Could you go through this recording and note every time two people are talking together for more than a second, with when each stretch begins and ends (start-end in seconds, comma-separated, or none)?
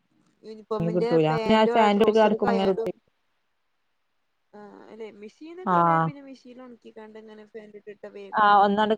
0.7-2.9